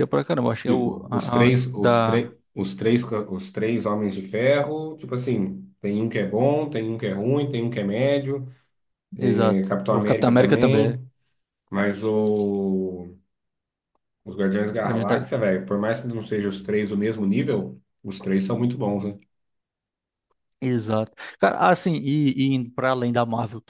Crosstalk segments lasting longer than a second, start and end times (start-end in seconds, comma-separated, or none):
0.7-2.3, 9.3-11.0